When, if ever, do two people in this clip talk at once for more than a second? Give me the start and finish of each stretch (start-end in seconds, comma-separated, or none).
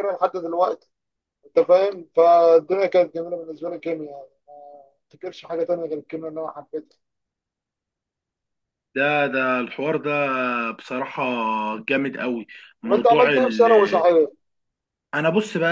none